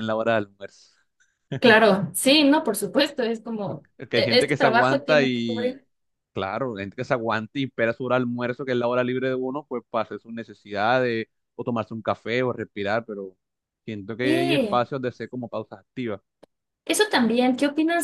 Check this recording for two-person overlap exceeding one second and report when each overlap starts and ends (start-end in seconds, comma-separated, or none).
4.0-5.8